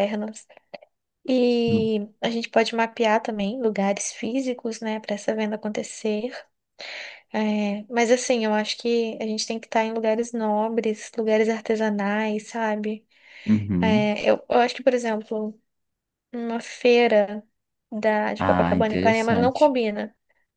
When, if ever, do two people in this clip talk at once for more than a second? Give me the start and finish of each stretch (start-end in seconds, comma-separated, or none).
18.4-19.7